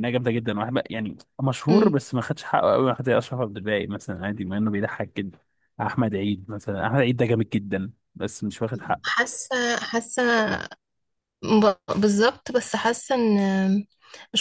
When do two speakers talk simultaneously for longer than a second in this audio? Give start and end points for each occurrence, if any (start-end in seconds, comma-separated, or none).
none